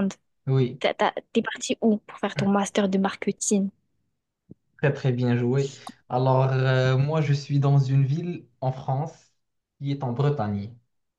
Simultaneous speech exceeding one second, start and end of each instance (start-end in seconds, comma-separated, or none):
none